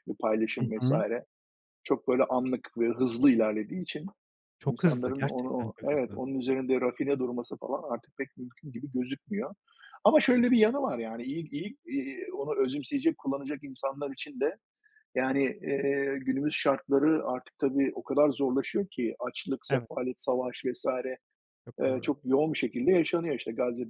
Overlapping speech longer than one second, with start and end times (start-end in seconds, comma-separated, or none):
4.7-6.2